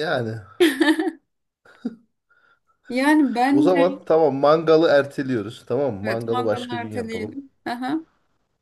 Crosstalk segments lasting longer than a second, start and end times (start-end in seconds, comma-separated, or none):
6.0-7.3